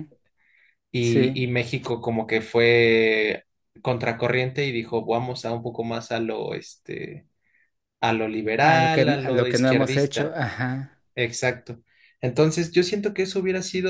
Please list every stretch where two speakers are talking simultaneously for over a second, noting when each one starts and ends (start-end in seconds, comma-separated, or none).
8.6-10.4